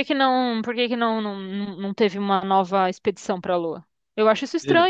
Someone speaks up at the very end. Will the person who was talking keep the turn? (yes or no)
no